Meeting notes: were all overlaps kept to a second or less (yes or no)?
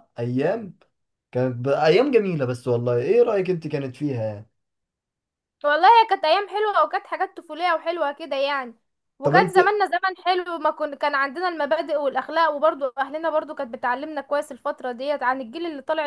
yes